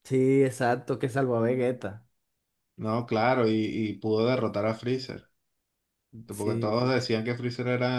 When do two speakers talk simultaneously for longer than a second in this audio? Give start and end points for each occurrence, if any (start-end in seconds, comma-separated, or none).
none